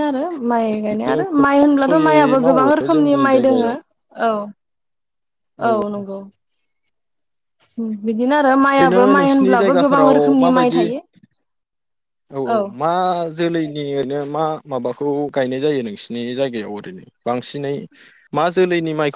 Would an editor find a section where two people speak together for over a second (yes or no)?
yes